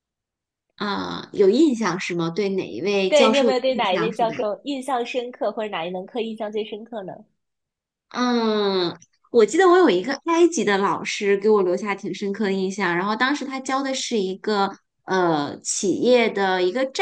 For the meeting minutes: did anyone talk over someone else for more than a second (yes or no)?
yes